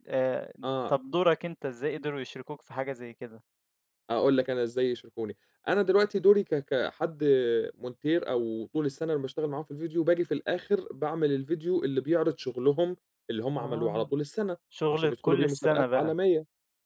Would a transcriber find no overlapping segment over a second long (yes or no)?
no